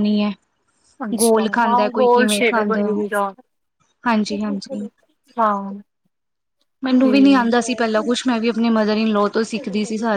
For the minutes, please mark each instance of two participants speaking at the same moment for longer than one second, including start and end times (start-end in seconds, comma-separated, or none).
1.2-3.1